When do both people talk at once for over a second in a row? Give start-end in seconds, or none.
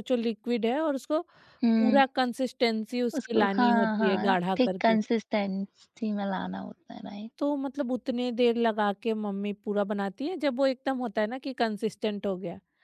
3.2-5.0